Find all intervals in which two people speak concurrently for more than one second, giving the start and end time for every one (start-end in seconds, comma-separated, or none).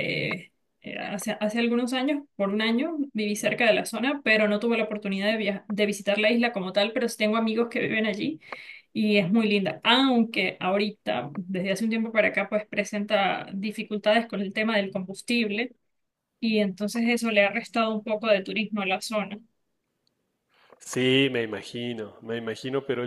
none